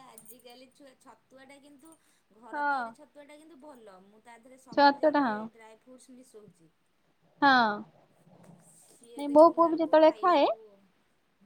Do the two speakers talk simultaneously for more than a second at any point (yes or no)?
yes